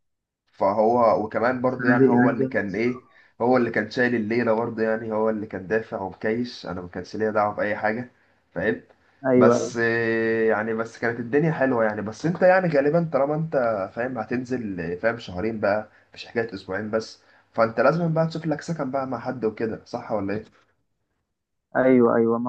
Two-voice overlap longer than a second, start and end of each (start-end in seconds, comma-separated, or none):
1.6-3.0